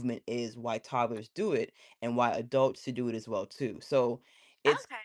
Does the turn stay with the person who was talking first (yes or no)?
no